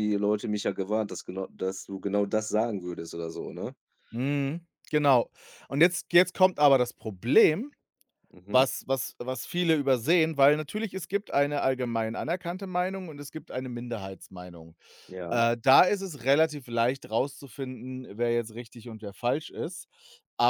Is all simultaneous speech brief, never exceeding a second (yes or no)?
yes